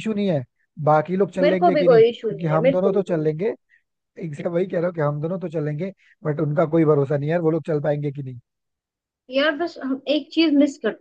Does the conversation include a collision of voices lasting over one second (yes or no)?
yes